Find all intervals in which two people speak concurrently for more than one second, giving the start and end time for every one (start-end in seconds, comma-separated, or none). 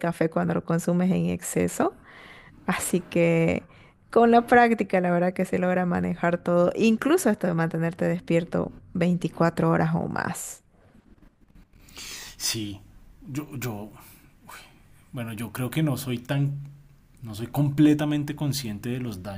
none